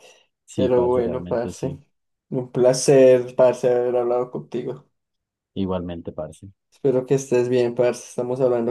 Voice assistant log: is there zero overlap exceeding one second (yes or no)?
no